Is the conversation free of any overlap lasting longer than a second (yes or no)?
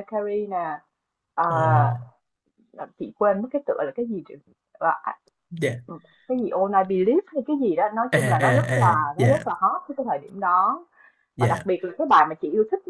no